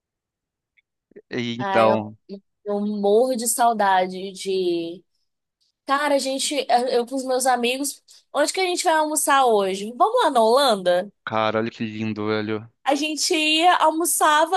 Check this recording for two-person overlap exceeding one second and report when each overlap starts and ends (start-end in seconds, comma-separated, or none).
none